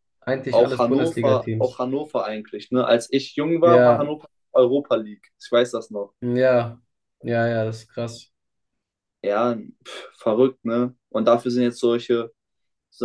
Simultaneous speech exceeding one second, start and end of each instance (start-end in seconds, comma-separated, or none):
0.5-1.8